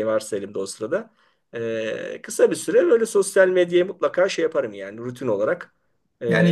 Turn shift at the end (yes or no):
yes